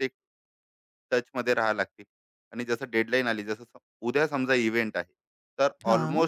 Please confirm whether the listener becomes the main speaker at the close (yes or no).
no